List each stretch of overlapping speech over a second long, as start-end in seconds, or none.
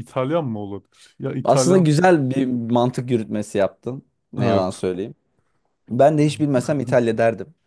none